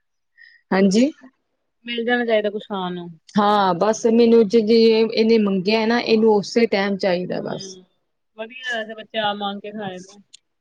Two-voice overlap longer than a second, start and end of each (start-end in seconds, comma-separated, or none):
none